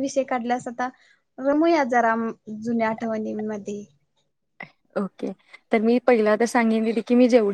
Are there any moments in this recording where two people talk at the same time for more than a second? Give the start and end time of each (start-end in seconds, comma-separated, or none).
none